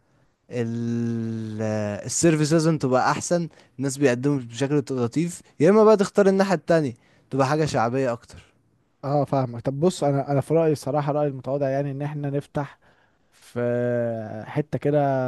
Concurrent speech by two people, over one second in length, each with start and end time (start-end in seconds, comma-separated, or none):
none